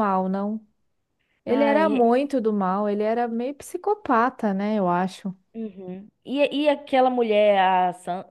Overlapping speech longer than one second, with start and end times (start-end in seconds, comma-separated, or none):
none